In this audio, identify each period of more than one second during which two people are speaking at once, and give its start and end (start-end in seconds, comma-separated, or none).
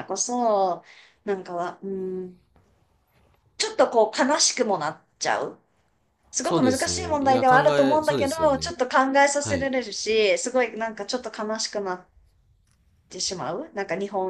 6.4-8.8